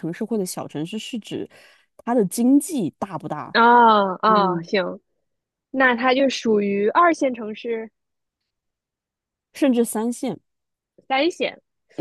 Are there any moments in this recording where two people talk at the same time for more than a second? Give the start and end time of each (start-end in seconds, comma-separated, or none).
none